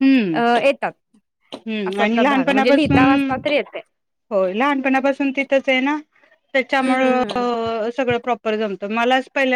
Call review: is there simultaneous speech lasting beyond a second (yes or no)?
yes